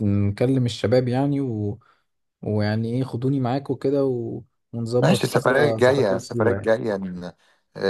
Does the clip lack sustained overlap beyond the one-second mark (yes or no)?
no